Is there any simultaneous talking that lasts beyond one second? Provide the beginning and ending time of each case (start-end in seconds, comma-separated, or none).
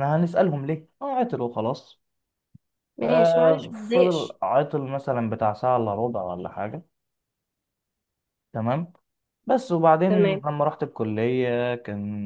3.0-4.4